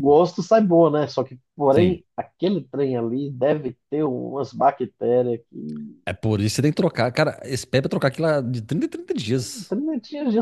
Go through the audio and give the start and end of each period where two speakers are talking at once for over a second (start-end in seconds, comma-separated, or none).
none